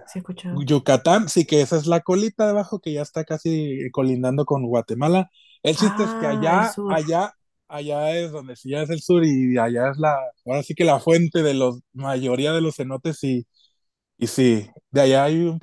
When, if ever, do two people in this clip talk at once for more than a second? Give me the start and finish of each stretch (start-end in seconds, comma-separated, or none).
5.7-7.0